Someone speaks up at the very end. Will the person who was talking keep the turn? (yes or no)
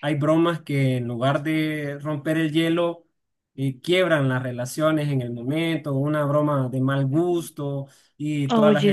yes